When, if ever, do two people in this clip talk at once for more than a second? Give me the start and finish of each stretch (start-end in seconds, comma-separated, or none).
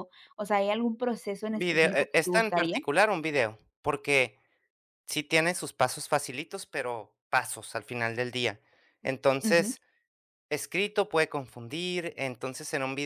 1.5-2.8